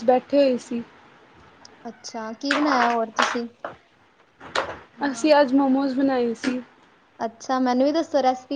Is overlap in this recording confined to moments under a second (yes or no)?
yes